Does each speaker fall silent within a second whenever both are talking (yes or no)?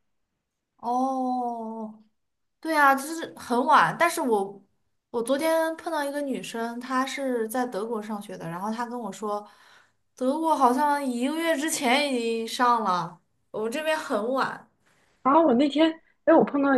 yes